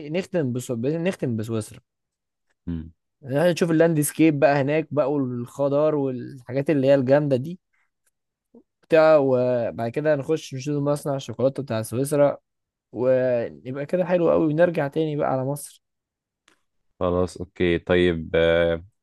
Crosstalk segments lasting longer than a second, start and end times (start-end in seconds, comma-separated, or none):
none